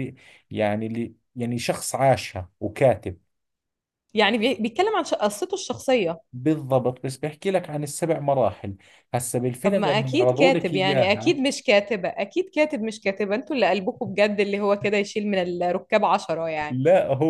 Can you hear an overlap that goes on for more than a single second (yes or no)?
yes